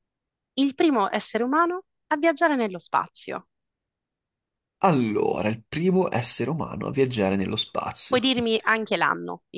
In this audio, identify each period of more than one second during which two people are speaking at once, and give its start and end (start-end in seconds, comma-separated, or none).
none